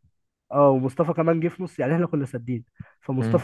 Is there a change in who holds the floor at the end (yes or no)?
no